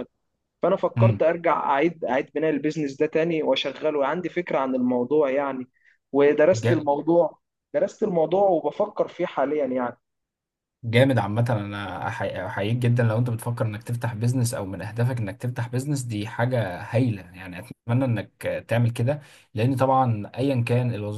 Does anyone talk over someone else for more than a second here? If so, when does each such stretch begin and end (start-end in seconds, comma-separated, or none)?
none